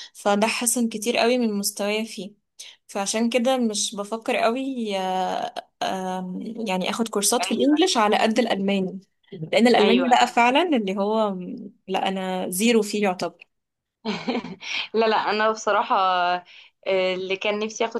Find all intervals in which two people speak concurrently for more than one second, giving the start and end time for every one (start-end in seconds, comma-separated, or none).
none